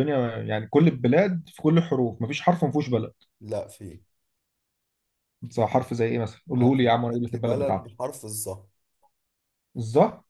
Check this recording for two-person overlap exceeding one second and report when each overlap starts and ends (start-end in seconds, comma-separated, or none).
6.6-7.9